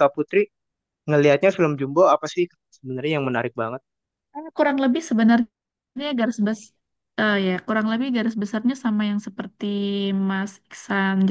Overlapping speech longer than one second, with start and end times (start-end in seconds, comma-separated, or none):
none